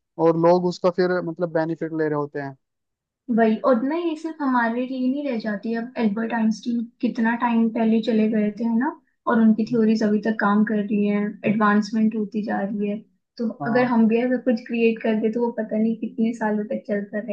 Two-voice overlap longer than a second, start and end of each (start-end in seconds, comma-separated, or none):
none